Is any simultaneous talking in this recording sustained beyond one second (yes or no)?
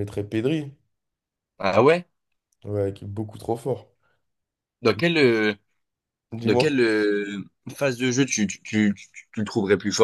no